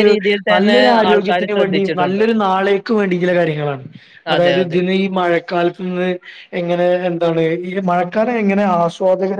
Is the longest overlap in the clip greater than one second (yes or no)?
yes